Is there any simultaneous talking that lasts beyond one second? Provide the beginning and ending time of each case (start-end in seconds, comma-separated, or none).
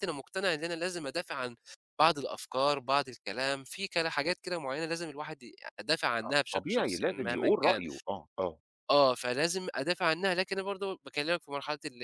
6.3-7.8